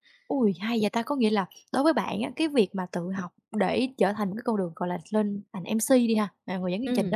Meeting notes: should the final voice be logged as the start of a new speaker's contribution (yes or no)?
no